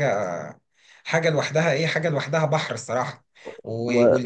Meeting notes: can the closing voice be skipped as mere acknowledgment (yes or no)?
yes